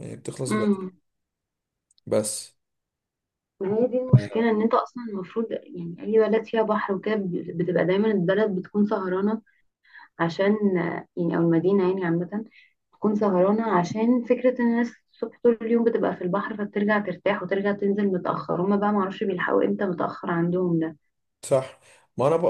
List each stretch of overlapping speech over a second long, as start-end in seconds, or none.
none